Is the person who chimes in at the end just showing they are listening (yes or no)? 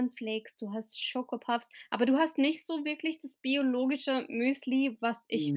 yes